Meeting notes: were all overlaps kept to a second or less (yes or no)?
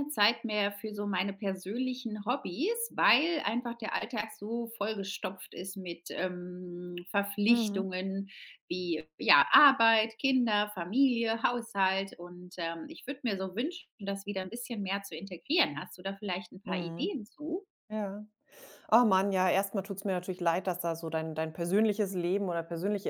yes